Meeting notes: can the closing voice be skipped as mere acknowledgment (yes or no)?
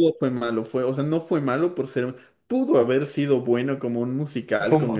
yes